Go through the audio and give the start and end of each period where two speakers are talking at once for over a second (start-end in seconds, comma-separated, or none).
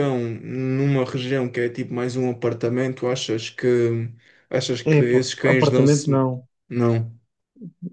4.9-6.3